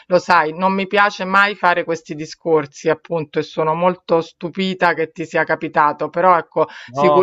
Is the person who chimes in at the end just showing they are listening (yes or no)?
yes